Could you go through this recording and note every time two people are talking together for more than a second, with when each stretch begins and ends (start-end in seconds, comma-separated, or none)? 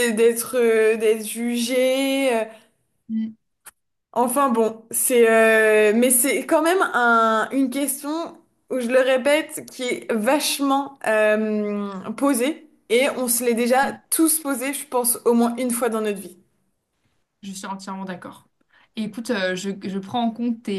none